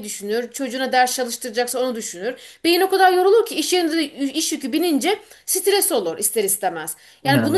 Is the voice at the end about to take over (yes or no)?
no